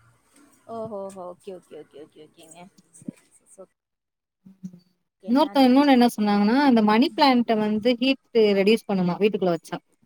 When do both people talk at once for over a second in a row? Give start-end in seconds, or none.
none